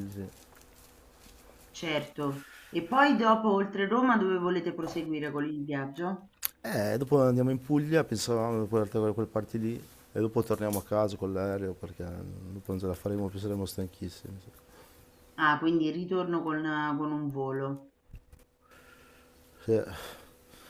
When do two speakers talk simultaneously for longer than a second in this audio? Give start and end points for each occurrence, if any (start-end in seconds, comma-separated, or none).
none